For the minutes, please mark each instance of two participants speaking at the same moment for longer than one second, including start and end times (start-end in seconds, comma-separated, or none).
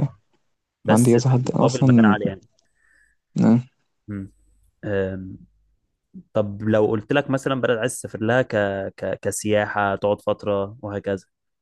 0.9-2.2